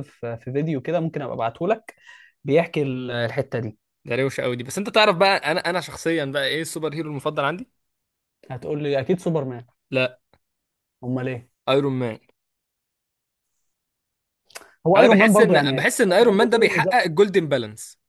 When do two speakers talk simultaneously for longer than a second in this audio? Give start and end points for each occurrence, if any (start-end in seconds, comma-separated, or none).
15.0-17.0